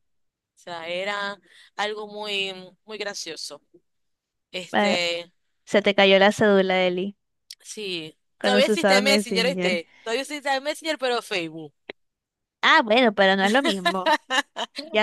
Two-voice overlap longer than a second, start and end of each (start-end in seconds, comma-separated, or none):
8.4-9.8